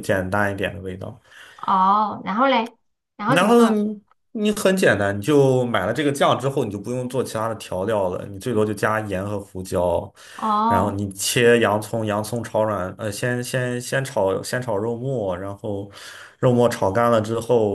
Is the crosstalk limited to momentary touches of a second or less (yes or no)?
yes